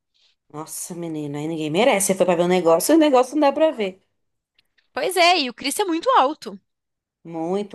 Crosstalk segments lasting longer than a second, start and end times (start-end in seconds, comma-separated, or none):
none